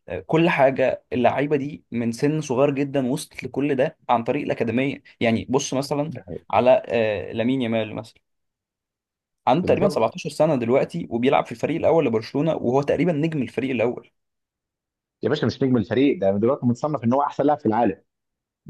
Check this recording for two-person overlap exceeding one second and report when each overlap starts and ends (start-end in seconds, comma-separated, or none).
none